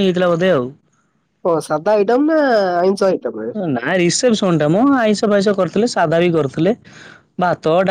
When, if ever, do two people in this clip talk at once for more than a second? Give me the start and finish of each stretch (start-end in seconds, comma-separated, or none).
none